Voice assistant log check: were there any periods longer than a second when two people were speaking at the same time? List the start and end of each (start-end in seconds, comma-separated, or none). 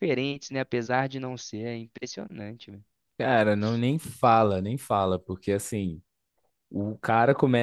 none